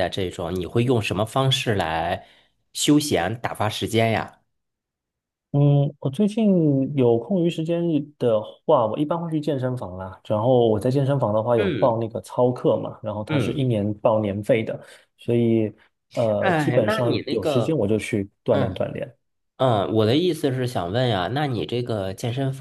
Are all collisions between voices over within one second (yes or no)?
no